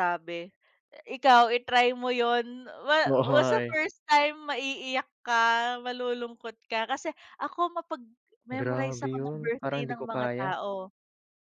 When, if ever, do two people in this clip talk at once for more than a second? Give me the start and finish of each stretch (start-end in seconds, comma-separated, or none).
8.6-10.5